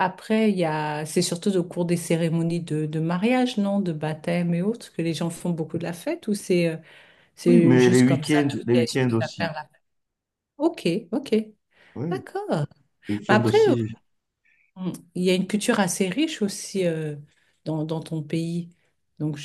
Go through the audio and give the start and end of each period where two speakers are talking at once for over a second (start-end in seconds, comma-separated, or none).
7.5-9.5